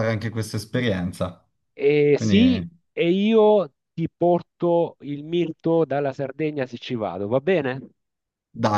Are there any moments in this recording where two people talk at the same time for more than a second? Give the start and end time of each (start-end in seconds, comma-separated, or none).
none